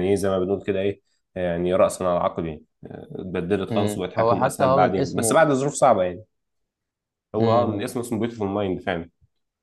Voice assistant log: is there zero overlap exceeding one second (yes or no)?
no